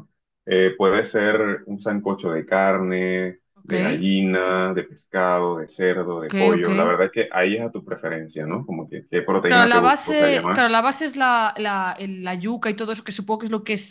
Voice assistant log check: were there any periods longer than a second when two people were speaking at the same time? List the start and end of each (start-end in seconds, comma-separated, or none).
9.4-10.7